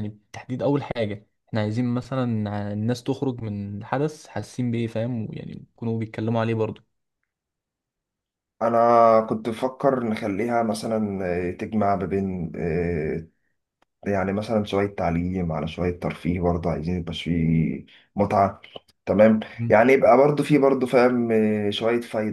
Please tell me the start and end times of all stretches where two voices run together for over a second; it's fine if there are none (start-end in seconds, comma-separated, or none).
none